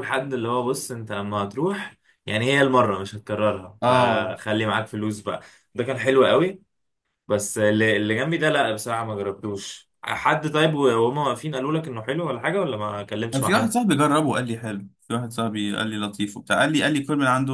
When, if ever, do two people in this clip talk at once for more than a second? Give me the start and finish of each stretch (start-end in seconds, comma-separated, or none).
none